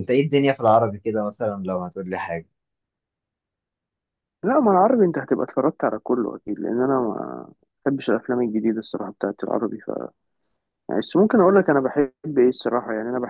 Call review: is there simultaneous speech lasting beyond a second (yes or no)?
no